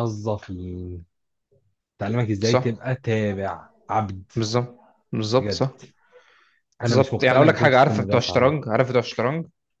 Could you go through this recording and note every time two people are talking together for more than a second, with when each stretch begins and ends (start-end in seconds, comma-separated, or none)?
6.9-8.5